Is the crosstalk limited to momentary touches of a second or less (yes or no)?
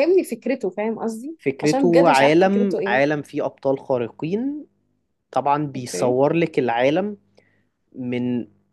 no